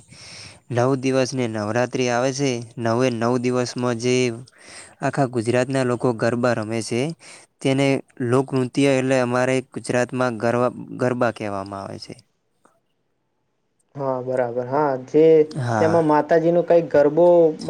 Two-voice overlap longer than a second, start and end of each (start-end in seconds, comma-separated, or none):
none